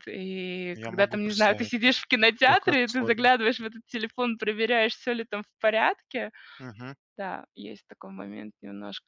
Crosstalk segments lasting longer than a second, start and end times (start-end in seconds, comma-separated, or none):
0.8-3.3